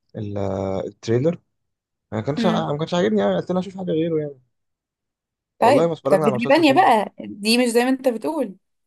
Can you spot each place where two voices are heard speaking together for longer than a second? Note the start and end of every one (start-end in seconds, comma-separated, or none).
5.6-6.9